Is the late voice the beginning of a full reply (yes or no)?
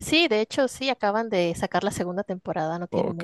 yes